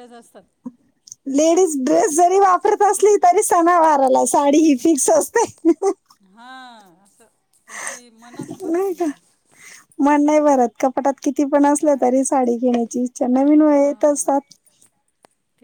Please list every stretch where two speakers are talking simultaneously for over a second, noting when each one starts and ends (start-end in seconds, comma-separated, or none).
none